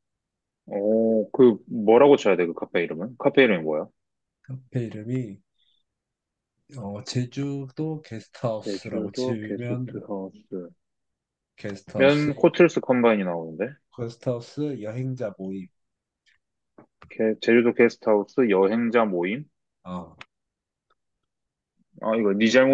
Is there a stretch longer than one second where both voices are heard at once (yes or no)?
yes